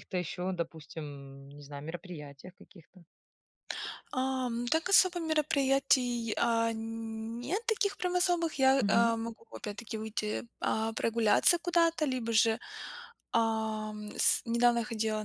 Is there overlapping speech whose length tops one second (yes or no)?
no